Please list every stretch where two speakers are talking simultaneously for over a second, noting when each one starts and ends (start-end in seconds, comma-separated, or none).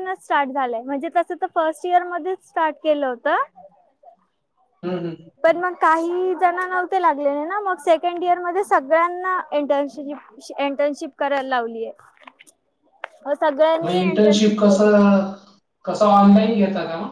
13.8-15.0